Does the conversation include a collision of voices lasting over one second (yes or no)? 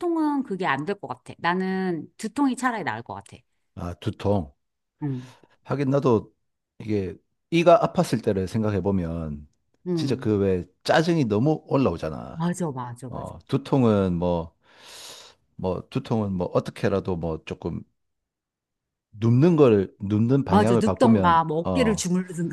yes